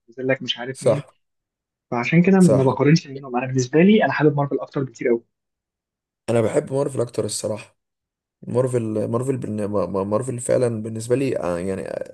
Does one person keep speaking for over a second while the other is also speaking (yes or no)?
no